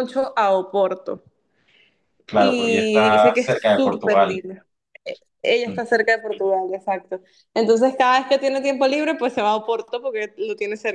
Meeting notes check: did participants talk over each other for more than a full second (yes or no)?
yes